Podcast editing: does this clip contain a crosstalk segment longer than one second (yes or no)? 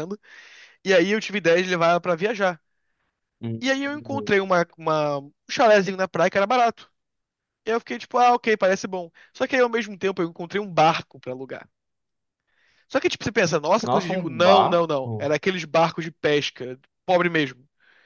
yes